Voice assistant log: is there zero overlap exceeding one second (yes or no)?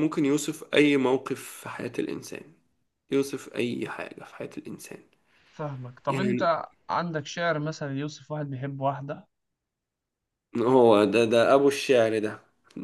yes